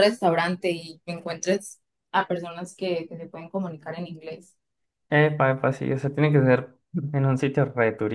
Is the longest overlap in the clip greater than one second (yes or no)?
no